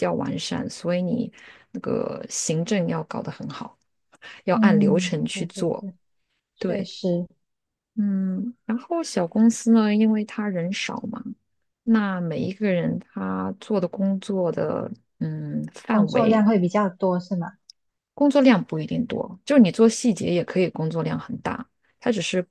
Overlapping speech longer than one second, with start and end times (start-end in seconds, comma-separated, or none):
4.5-5.9